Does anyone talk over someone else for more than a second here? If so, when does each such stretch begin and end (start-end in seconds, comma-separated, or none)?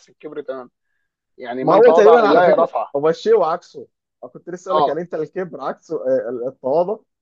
1.6-2.9